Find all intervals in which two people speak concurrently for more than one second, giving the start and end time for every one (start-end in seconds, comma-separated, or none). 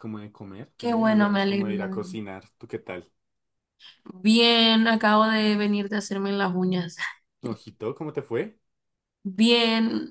0.8-2.1